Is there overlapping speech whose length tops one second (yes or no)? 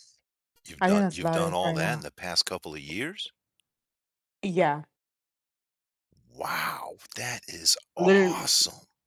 yes